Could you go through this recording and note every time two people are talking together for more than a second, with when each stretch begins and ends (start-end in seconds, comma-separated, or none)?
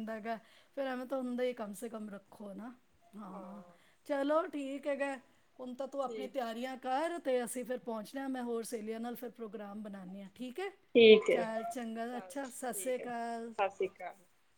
12.1-13.5